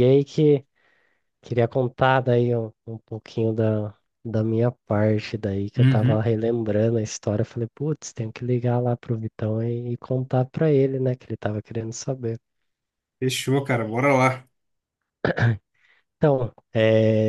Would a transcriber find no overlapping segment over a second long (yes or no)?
yes